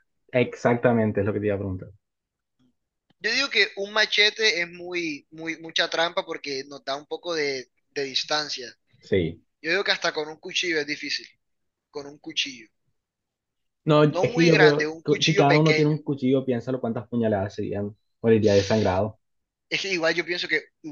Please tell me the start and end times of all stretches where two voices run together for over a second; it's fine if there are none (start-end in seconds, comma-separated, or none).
14.1-16.0